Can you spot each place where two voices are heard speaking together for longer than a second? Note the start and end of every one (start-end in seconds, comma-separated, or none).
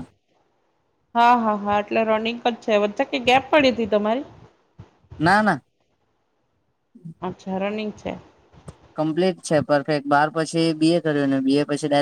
none